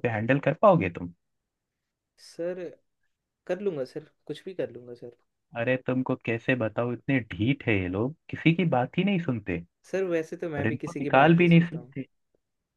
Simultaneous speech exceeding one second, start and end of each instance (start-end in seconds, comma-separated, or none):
10.6-11.9